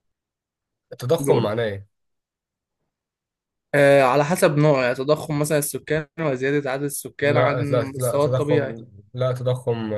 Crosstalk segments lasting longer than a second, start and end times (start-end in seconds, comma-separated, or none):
7.2-8.8